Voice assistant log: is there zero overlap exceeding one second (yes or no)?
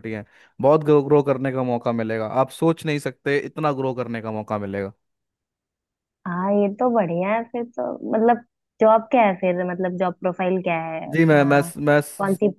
yes